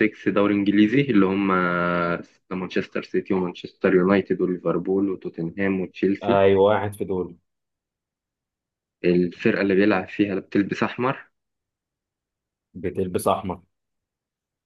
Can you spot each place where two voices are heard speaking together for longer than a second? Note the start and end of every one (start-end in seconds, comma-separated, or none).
none